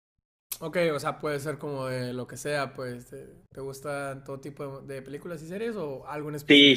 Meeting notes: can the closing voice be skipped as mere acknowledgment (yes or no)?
no